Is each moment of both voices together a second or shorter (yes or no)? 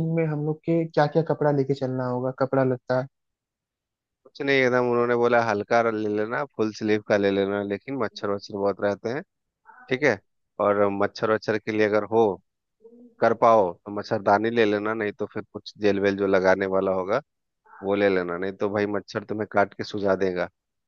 yes